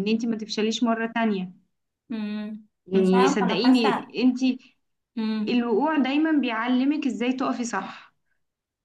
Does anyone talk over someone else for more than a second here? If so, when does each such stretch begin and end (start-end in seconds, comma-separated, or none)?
2.9-4.1